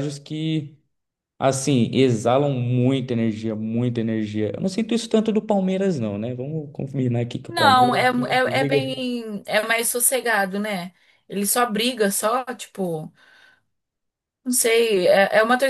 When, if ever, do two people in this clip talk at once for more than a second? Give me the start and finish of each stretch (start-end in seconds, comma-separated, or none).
7.5-9.1